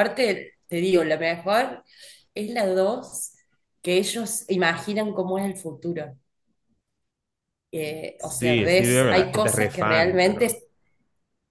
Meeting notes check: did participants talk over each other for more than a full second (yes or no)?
yes